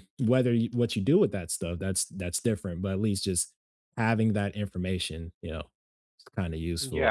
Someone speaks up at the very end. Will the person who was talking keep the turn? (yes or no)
no